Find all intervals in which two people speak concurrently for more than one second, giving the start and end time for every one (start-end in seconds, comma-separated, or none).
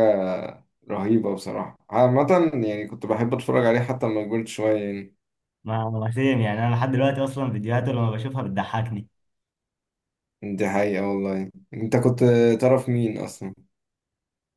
none